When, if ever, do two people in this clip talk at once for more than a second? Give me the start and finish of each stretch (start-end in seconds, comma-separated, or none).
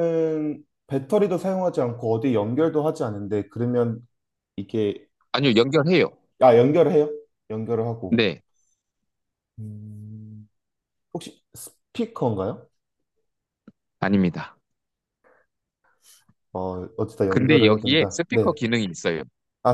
17.3-18.6